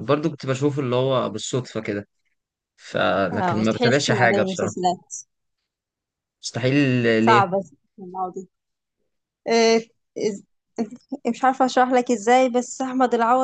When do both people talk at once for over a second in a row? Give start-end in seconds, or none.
3.3-4.8